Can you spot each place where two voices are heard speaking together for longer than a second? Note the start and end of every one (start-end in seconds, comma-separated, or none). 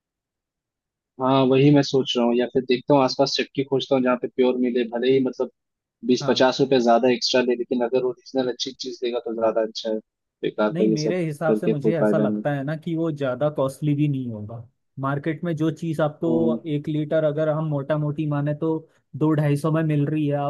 10.7-12.4